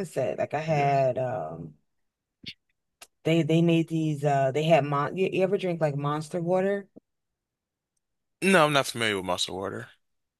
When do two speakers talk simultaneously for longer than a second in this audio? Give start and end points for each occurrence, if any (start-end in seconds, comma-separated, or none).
none